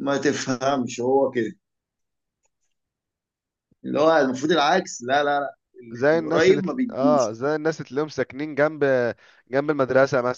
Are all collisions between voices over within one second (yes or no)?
no